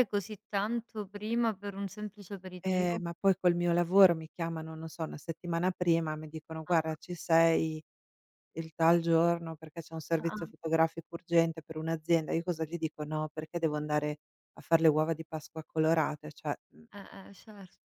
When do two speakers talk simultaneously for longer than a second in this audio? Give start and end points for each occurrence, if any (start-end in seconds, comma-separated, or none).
none